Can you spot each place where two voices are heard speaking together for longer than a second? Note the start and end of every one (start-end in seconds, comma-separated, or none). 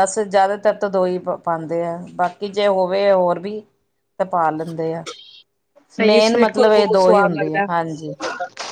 6.1-7.7